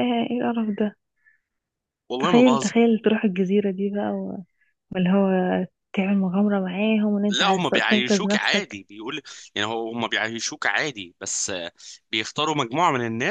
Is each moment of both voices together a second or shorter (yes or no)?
no